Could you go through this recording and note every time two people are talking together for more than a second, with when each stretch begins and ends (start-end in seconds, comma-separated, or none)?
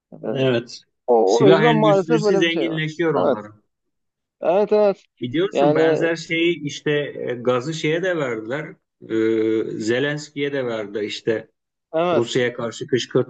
1.2-3.4